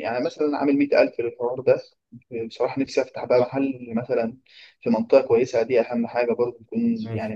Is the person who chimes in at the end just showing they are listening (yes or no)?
no